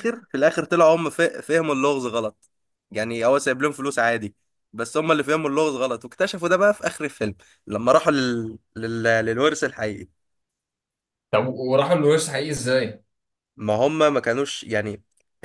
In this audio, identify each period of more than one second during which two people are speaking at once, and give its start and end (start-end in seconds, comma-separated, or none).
none